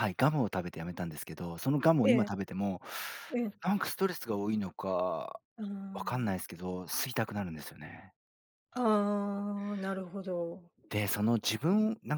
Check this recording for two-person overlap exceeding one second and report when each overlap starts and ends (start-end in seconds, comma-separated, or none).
none